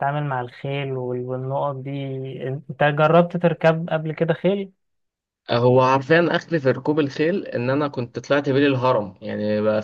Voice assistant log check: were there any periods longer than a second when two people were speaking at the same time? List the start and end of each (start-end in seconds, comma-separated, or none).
none